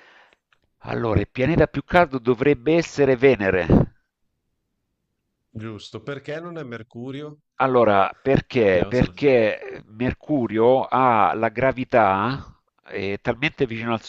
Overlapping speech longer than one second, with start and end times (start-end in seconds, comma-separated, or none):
none